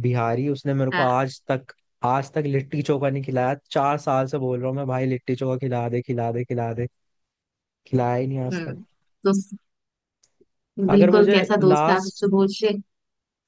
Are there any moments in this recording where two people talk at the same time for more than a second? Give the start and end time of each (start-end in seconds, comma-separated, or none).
10.9-12.2